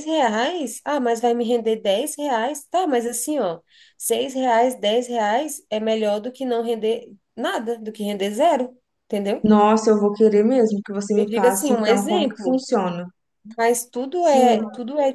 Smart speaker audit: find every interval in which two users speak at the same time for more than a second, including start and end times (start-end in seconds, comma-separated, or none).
11.2-12.6